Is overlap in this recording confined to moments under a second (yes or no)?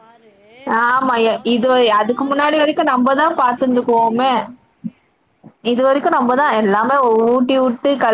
no